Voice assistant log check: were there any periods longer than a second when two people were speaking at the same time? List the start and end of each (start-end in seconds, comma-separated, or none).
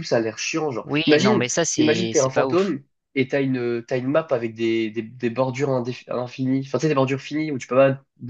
0.8-2.8